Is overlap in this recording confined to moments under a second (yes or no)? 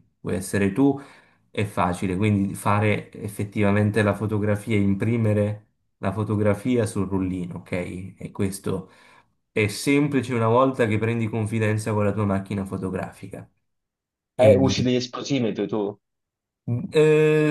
yes